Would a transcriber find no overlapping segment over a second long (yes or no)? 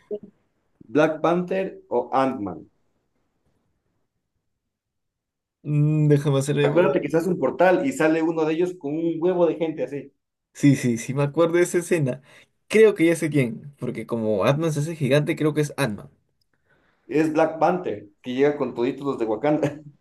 yes